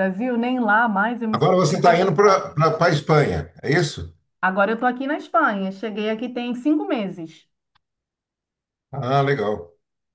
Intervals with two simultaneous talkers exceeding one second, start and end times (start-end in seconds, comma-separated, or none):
1.3-2.6